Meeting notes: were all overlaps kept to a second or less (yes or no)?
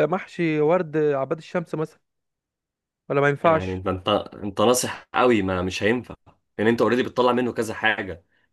yes